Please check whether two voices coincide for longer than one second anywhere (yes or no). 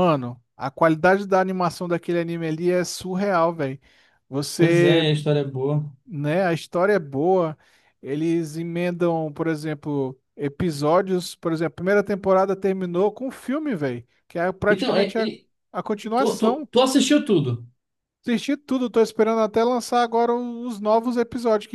no